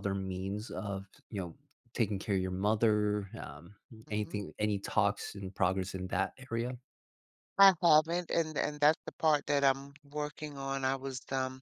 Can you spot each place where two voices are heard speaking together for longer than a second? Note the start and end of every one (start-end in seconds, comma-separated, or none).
none